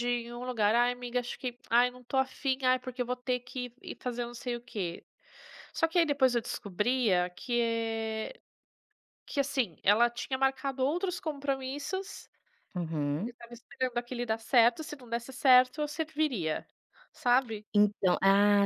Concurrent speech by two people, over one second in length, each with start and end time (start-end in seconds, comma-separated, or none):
none